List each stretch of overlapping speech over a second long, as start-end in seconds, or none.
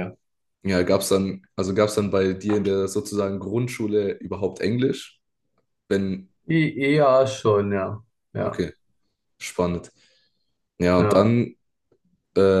none